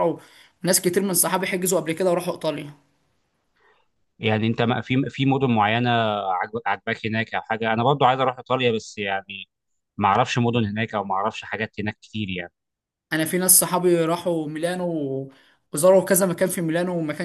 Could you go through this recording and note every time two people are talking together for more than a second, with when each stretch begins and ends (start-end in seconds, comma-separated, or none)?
none